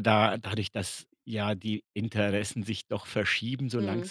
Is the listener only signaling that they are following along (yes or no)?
yes